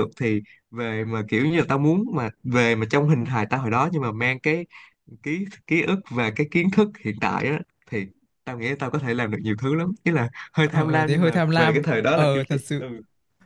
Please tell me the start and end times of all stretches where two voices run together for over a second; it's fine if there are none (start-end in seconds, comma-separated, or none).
10.6-12.8